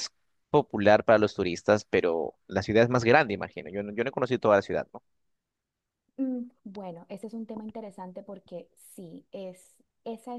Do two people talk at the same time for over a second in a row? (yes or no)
no